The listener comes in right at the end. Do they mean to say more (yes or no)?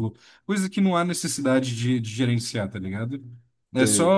no